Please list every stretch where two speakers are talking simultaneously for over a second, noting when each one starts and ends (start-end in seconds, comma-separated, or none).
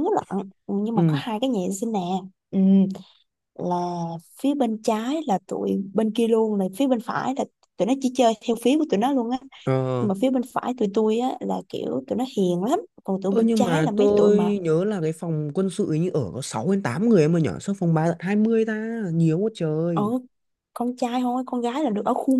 13.3-14.6